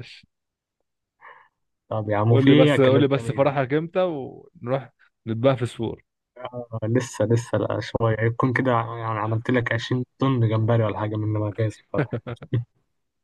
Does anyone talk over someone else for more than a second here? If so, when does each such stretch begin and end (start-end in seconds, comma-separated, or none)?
2.3-3.5